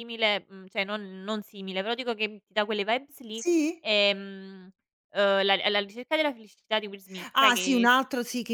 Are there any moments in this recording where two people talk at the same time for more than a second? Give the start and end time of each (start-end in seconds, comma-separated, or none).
none